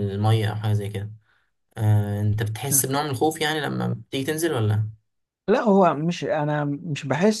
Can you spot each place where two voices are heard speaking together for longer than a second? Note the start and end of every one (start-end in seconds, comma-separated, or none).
none